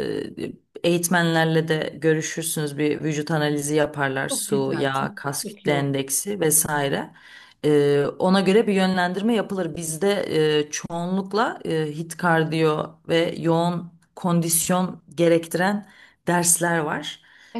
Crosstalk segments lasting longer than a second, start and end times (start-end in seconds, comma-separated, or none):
4.3-6.0